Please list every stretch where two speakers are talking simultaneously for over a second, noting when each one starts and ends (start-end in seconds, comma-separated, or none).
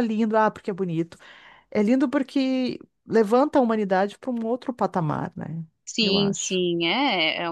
none